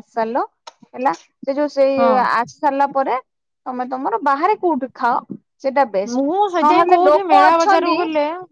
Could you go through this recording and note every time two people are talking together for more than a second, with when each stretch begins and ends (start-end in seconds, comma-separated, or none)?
6.1-8.0